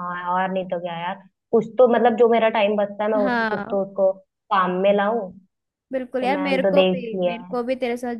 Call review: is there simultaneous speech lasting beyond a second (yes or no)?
yes